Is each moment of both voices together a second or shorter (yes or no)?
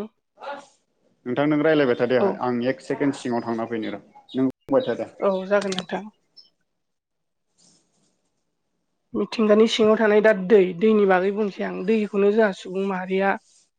yes